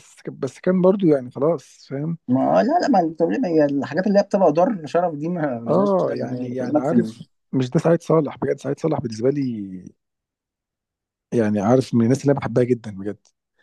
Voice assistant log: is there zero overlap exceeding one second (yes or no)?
no